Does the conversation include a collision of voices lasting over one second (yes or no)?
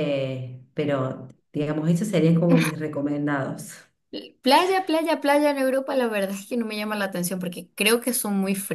no